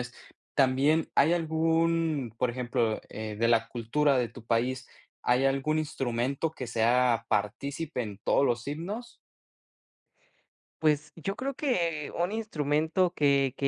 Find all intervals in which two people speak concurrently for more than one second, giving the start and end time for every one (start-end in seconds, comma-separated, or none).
none